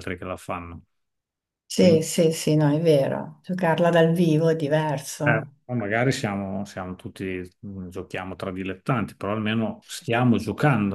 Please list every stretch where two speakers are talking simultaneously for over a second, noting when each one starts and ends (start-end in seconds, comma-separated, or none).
none